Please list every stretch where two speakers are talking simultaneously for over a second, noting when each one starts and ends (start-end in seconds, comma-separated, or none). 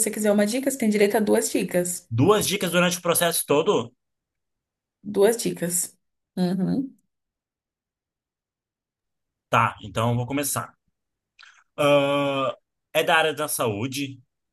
none